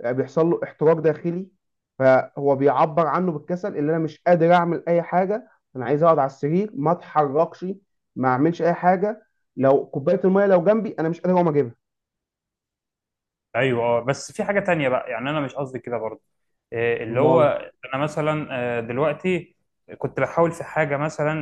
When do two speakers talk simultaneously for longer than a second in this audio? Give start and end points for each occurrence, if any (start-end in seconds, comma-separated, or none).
none